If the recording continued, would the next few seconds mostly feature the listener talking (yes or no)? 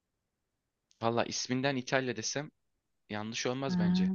no